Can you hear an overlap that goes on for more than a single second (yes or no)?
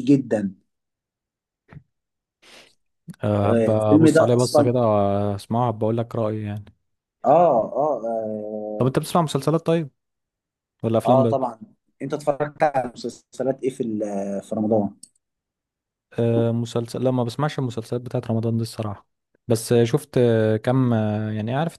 yes